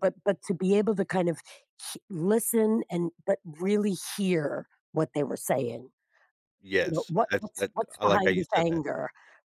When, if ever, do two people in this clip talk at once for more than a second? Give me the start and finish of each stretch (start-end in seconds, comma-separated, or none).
6.8-8.8